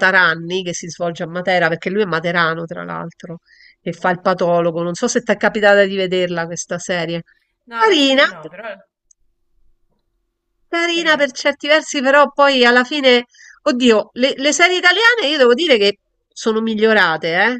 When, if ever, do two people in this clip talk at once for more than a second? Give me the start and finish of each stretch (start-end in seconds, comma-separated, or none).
none